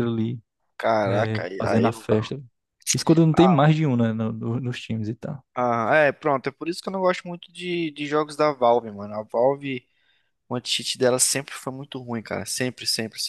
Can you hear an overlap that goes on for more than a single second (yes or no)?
yes